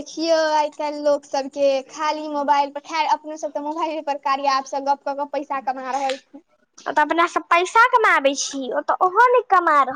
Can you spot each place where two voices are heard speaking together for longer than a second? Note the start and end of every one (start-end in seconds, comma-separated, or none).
none